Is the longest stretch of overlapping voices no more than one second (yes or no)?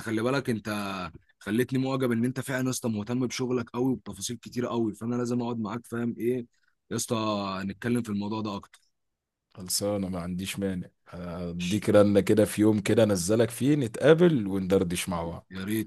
yes